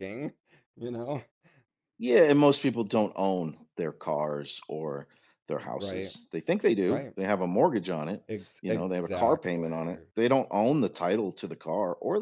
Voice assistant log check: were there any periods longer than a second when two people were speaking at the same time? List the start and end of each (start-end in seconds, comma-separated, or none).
8.6-10.1